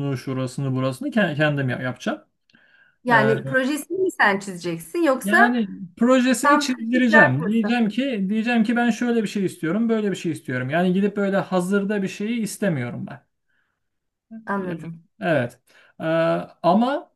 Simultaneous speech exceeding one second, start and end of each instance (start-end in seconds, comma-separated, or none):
6.4-7.8